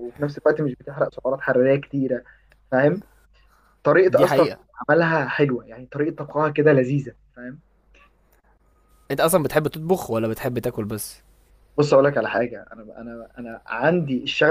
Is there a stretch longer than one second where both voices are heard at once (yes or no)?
no